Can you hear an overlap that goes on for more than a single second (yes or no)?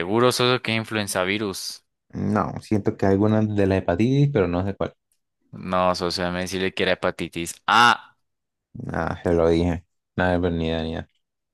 no